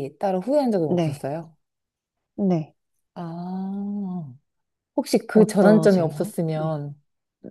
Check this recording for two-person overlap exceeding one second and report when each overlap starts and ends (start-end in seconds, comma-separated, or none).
5.3-6.8